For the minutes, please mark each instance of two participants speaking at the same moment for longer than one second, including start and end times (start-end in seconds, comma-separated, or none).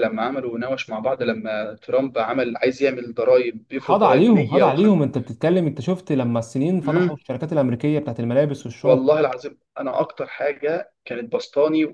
3.7-5.0